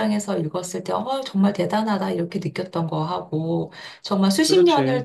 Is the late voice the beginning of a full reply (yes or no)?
no